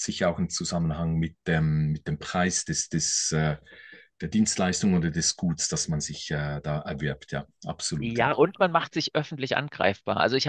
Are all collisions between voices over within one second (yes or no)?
yes